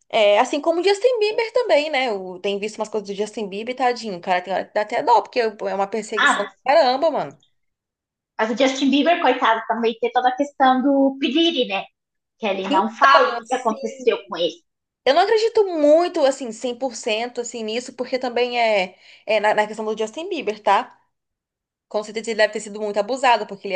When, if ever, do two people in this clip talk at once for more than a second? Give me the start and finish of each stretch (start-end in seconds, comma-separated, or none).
12.7-14.0